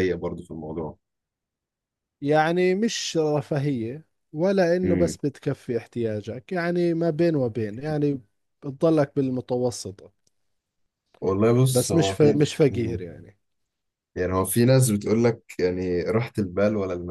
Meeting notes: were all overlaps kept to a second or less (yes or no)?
no